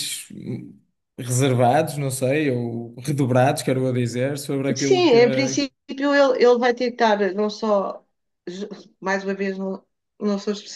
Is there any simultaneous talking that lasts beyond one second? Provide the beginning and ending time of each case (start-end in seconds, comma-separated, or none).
none